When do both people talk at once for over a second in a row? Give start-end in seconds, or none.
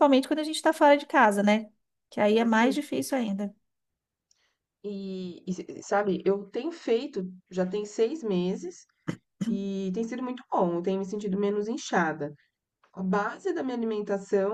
none